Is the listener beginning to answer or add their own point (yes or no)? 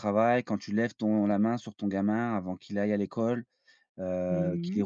yes